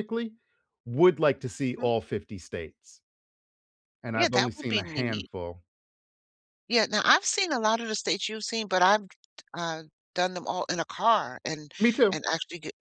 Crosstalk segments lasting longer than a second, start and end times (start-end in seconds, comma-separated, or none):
4.1-5.3